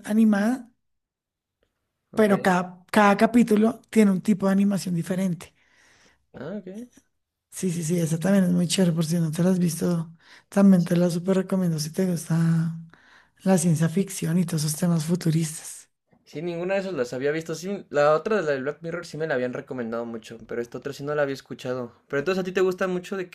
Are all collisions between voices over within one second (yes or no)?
yes